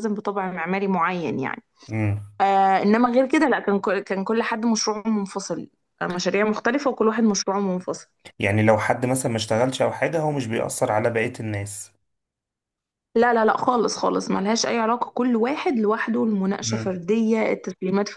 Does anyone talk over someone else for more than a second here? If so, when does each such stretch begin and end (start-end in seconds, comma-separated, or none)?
none